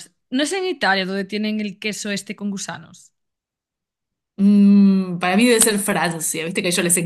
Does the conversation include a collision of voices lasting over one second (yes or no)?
no